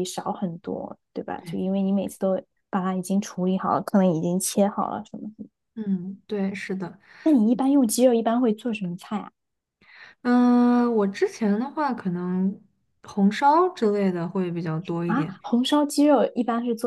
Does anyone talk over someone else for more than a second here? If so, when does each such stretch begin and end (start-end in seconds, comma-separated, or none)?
none